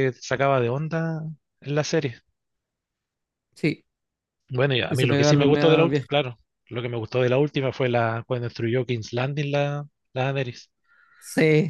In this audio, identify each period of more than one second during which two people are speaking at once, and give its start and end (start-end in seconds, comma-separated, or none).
4.9-6.1